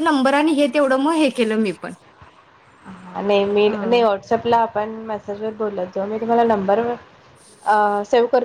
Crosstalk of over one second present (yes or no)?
no